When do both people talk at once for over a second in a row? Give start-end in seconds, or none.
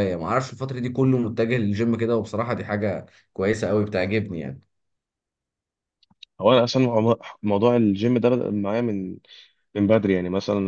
none